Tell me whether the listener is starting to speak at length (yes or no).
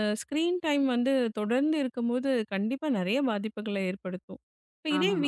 no